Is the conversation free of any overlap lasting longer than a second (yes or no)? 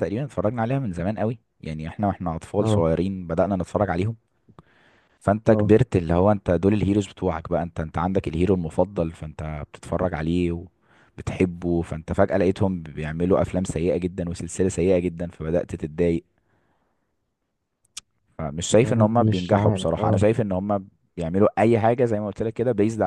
no